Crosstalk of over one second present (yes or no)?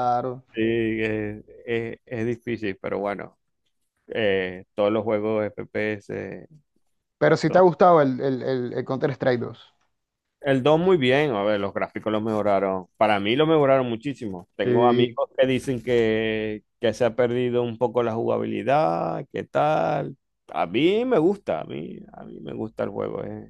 no